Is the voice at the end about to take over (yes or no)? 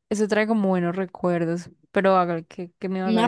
yes